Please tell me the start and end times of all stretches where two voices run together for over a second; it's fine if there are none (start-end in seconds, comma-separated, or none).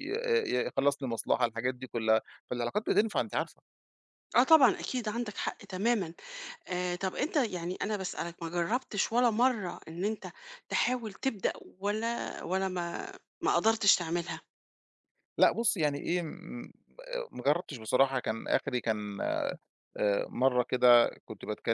none